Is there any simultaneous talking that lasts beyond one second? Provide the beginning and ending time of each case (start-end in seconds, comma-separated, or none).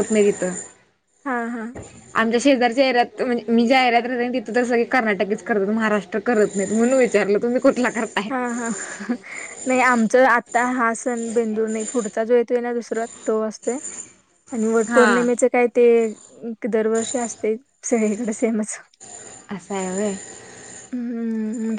none